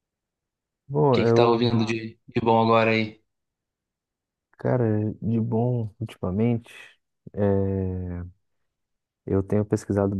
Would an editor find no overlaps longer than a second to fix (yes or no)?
yes